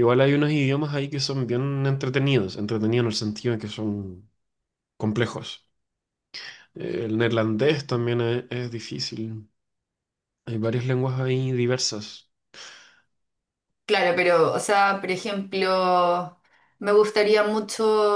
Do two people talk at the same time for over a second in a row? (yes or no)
no